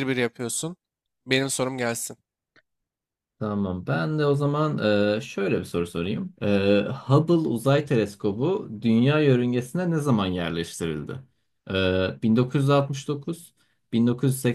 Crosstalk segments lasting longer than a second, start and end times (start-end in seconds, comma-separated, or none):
none